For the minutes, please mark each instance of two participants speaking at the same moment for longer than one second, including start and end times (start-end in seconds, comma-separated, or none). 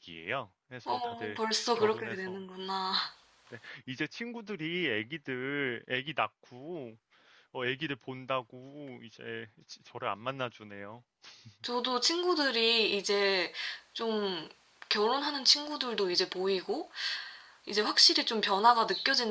0.8-2.4